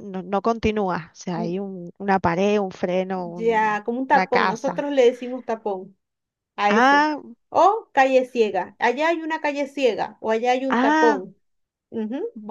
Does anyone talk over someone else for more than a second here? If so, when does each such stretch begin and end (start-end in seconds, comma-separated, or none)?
3.1-4.9